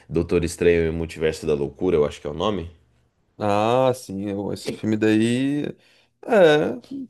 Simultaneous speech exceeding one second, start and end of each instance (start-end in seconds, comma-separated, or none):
none